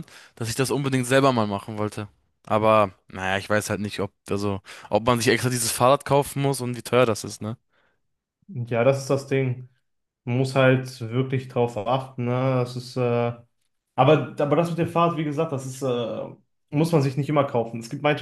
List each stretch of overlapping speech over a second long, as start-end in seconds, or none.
none